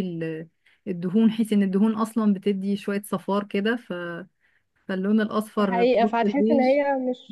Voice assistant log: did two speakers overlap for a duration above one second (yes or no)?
yes